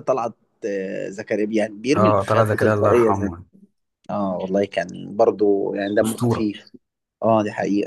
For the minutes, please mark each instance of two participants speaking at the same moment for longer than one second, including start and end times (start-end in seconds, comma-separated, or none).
1.9-3.3